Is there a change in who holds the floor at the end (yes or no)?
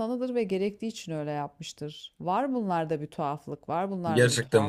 yes